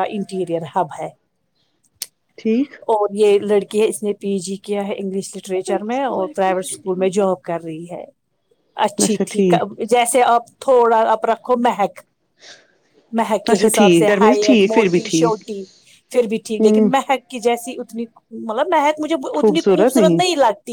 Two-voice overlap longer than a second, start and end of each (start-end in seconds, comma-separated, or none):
13.5-15.4